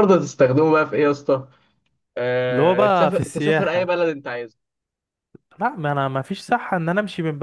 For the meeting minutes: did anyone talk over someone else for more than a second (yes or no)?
yes